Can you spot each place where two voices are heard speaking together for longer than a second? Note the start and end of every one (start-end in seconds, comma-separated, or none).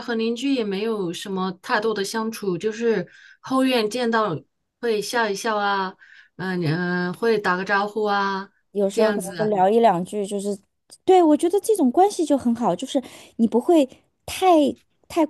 none